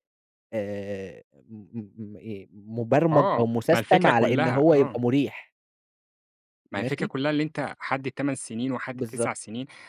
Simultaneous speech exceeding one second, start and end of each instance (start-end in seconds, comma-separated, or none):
3.1-5.0